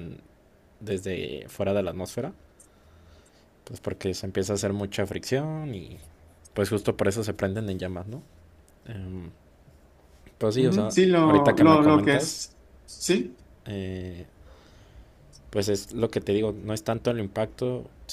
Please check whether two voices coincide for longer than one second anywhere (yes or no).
yes